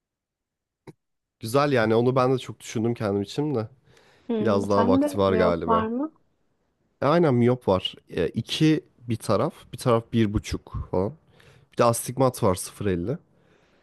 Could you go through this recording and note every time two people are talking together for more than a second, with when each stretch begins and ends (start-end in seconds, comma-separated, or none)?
4.4-5.9